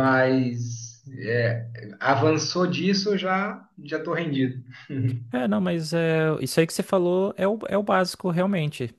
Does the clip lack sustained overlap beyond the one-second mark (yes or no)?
yes